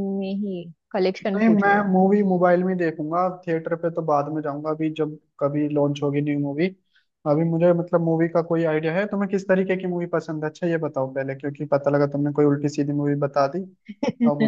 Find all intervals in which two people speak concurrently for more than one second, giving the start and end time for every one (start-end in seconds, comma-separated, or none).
none